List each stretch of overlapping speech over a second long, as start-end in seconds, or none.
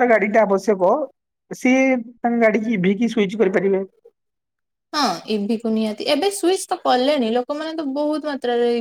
none